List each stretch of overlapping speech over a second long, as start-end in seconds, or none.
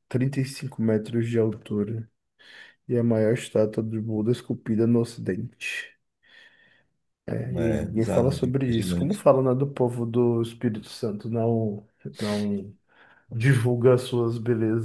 7.5-9.2